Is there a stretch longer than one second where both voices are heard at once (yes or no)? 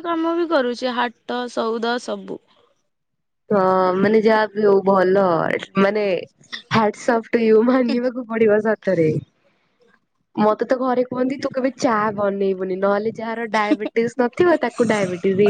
no